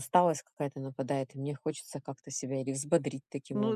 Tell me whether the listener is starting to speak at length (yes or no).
yes